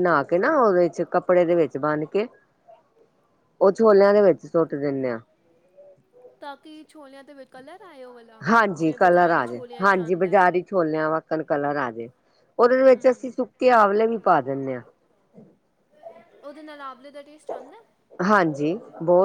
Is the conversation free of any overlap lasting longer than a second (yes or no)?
no